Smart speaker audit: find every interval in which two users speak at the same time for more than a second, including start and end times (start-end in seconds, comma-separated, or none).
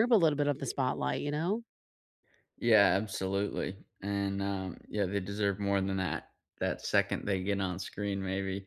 none